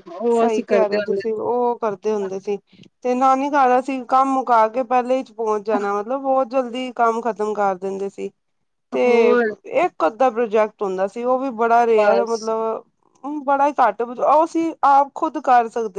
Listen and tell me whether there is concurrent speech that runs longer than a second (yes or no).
no